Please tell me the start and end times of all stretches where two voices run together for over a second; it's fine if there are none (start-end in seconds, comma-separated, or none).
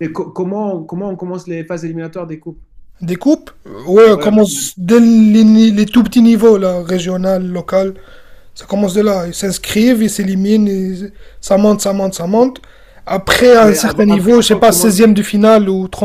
13.6-15.0